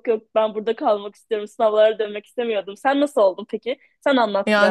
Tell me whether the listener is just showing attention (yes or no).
no